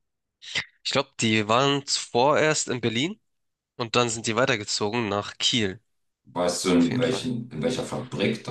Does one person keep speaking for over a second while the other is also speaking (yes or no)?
no